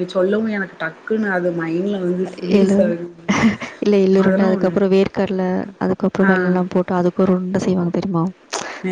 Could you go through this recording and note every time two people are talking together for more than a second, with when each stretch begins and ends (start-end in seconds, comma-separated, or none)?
none